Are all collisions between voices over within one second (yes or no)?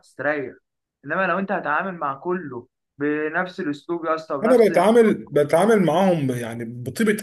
yes